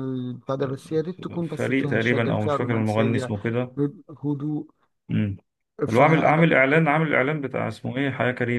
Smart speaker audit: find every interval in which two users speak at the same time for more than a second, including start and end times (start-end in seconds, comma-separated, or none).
1.6-3.3